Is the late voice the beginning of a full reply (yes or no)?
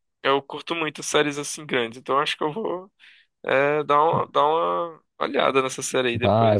yes